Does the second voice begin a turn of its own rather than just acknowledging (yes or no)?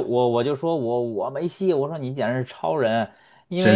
no